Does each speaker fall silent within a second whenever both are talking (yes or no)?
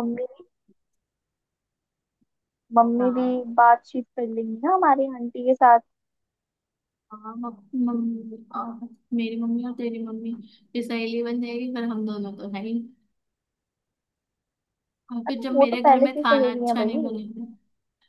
no